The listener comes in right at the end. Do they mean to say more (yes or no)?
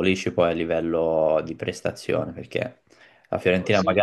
no